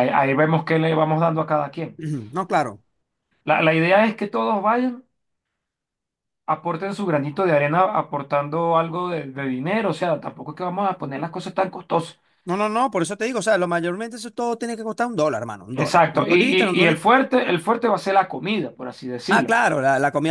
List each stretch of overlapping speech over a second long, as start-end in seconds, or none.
15.7-17.0